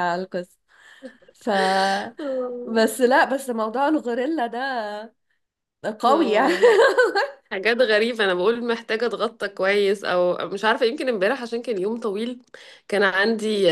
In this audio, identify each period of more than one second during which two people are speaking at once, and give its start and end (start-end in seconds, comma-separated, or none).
none